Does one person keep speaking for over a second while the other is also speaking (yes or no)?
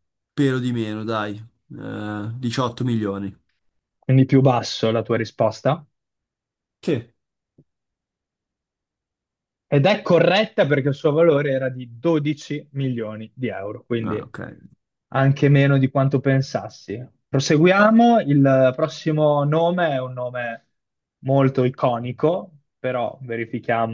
no